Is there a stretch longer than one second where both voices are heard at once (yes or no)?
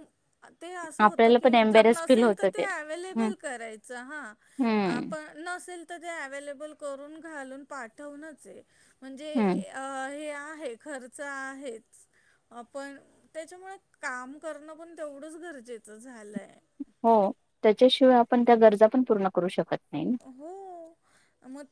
yes